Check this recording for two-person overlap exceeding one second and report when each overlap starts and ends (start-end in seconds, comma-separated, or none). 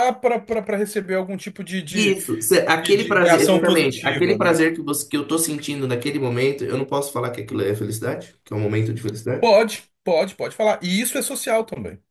2.8-4.6